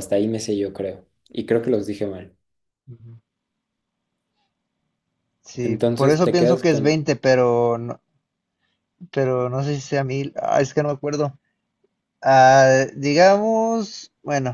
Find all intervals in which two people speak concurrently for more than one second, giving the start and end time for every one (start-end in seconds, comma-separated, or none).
5.6-7.0